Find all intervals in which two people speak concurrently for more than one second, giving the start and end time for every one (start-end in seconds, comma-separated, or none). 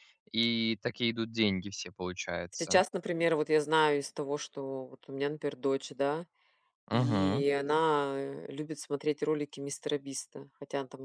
none